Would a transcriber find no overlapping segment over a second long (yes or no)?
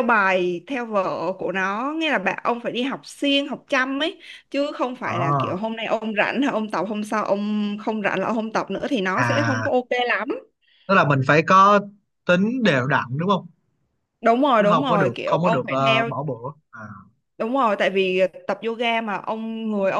no